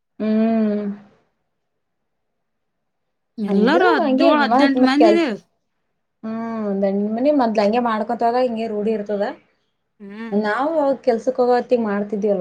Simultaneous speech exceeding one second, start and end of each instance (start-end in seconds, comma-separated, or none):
3.5-5.3